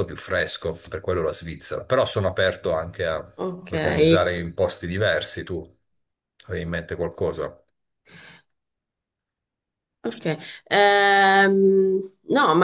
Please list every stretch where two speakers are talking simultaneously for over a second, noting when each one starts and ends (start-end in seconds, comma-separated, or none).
none